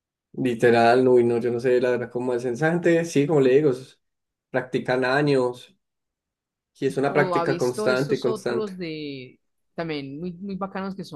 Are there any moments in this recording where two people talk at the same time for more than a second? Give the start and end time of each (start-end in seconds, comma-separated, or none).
7.0-8.7